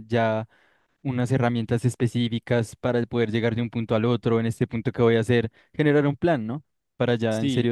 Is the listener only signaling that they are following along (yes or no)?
no